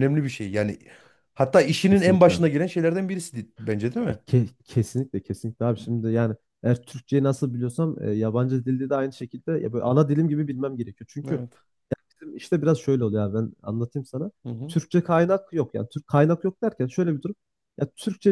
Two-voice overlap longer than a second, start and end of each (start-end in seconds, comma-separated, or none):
none